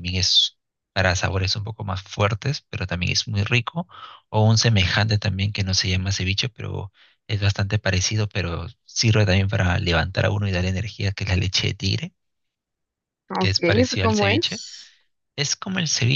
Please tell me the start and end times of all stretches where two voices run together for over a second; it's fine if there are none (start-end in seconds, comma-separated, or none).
13.4-14.6